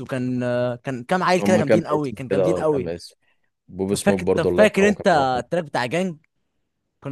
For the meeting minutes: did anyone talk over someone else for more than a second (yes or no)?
yes